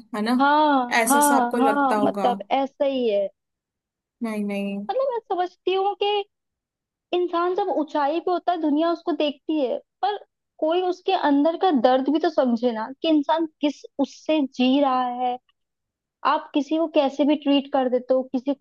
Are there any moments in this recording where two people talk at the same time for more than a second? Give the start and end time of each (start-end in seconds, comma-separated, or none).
1.0-2.3